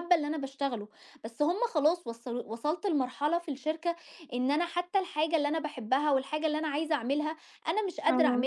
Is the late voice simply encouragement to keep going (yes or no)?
yes